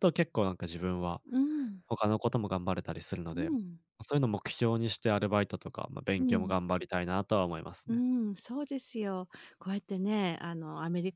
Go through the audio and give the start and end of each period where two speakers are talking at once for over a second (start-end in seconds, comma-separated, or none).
none